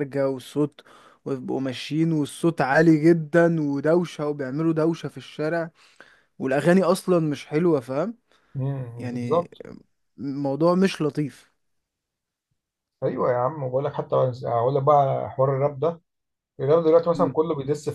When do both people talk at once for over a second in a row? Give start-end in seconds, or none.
none